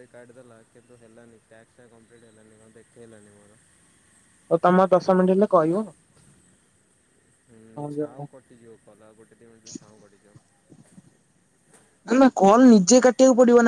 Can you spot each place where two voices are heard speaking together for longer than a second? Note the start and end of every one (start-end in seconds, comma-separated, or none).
none